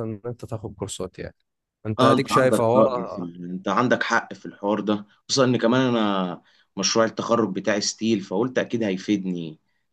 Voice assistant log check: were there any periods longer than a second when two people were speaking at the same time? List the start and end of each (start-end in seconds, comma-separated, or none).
2.0-3.3